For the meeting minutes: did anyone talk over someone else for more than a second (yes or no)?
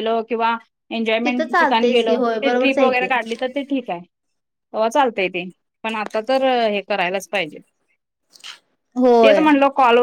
yes